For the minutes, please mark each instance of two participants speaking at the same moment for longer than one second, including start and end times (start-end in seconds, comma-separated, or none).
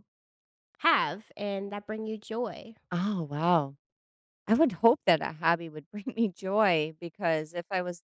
none